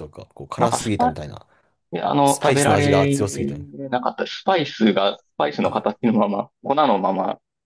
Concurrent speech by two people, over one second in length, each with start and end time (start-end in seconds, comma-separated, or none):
2.2-3.5